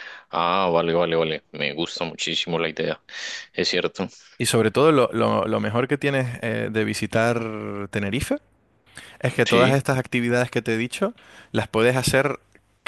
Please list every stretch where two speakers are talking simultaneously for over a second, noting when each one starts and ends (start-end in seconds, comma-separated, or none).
none